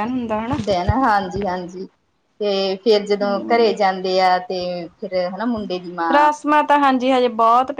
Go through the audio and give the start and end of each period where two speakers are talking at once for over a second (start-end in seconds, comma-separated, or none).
none